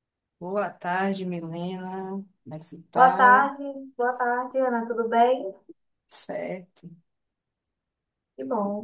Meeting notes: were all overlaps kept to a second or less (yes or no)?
yes